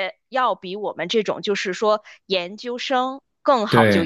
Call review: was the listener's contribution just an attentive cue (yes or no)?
yes